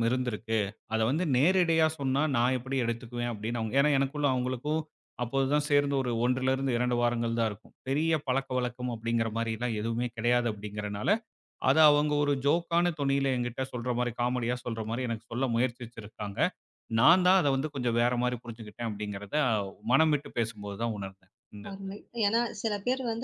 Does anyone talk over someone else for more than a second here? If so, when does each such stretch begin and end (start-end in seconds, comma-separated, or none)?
none